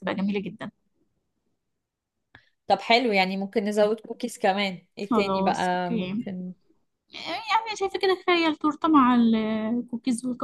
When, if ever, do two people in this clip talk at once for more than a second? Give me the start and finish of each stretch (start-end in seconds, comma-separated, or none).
5.1-6.3